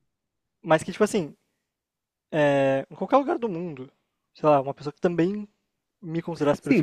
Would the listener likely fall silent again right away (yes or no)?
no